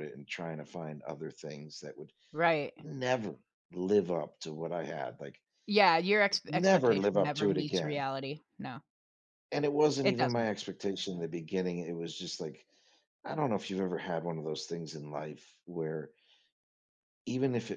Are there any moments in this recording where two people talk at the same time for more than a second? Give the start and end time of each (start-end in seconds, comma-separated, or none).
6.5-8.0